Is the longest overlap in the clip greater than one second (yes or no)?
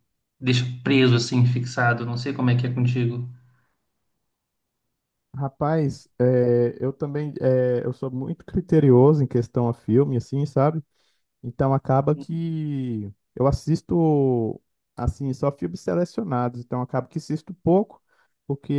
no